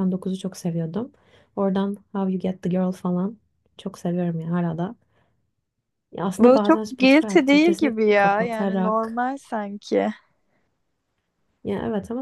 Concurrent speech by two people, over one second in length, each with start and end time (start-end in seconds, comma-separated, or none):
6.4-9.2